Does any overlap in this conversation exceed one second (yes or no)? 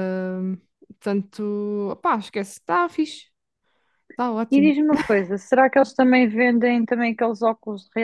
no